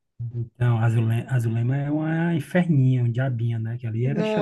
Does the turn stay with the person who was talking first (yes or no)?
no